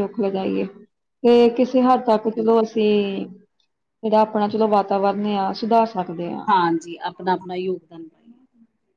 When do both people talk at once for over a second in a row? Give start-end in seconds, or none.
none